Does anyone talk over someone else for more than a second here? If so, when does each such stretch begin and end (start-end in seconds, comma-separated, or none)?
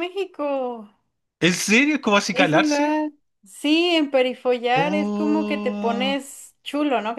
4.8-6.2